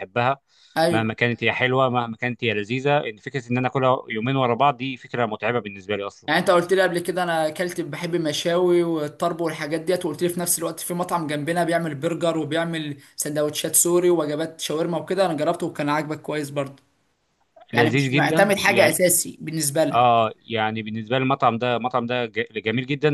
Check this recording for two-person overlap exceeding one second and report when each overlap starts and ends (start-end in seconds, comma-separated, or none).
17.7-19.0